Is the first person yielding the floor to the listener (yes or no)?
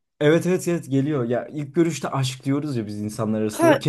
no